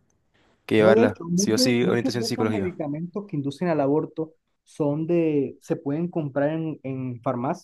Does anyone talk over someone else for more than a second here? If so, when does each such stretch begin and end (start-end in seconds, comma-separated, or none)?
0.8-2.7